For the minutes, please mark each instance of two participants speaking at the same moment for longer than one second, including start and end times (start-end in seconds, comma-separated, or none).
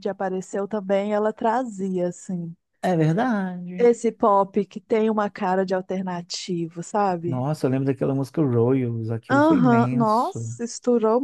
9.3-10.5